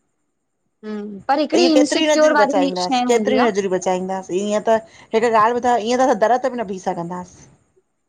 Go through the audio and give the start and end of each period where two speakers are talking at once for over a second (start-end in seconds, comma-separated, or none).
1.5-3.4